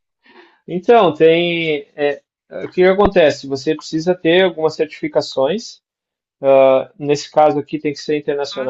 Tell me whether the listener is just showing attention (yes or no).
yes